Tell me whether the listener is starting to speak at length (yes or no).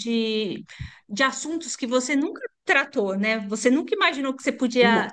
no